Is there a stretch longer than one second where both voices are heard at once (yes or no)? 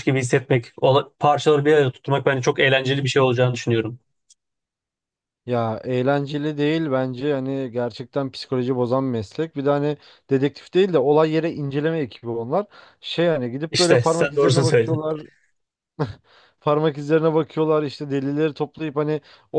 yes